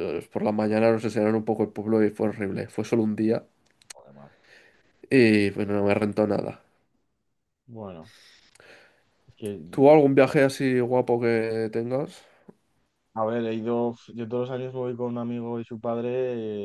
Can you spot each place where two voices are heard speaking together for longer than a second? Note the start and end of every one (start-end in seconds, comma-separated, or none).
none